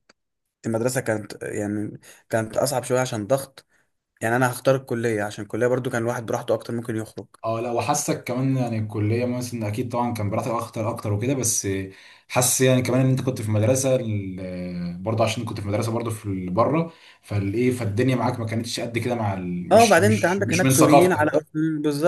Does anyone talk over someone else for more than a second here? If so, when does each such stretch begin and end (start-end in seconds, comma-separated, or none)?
19.7-21.2